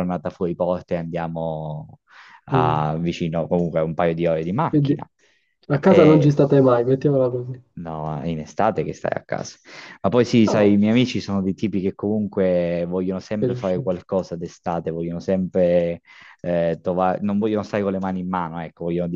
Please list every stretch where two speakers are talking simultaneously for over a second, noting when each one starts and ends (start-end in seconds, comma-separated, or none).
none